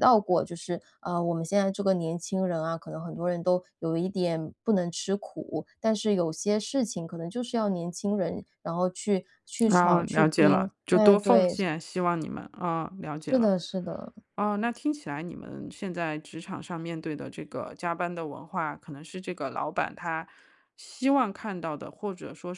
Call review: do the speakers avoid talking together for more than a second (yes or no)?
no